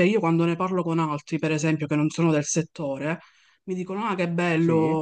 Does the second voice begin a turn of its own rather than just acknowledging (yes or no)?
no